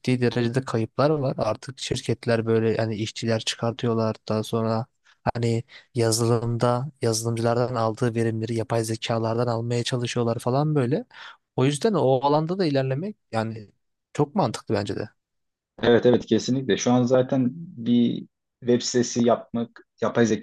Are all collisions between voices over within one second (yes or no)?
yes